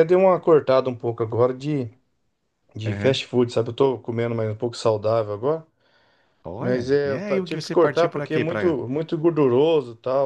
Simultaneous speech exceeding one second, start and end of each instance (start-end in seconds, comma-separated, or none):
6.6-8.8